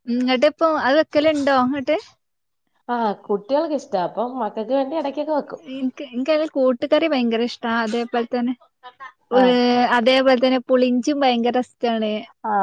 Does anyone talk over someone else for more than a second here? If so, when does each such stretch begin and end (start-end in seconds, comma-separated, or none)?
none